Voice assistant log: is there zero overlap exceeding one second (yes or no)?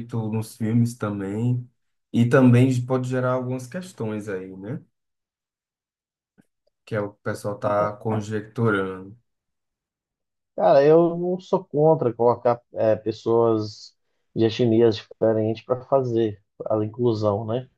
yes